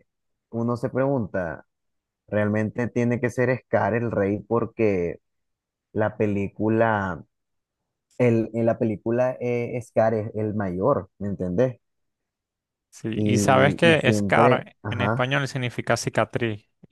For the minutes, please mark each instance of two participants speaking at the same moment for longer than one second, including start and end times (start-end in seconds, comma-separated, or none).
13.1-15.3